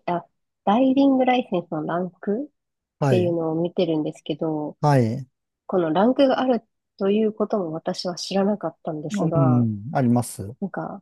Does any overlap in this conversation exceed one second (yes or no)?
no